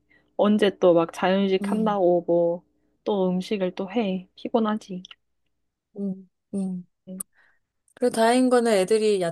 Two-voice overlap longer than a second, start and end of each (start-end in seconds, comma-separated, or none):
none